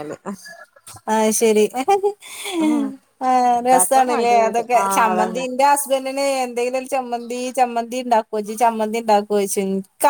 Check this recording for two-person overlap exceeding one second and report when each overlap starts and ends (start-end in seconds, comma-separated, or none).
3.7-5.4